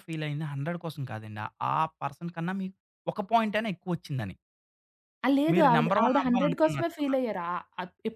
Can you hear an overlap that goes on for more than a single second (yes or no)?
yes